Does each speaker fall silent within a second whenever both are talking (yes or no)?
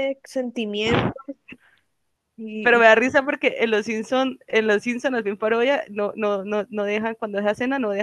yes